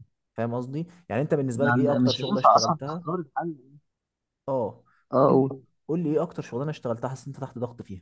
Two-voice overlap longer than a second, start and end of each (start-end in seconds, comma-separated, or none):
1.6-3.0